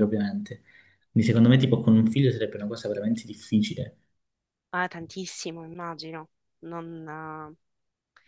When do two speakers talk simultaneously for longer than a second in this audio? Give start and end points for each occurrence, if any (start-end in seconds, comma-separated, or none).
none